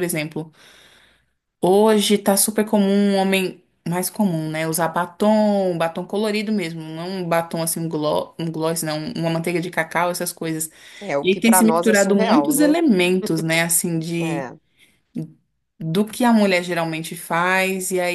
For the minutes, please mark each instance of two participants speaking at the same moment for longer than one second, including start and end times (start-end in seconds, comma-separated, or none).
11.2-12.8